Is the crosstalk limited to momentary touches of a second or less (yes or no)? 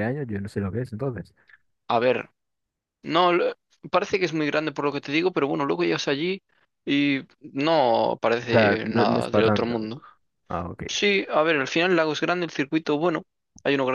no